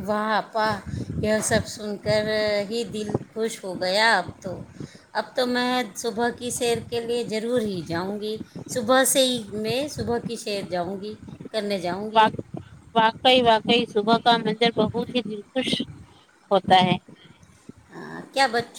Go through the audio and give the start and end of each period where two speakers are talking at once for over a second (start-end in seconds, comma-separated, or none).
none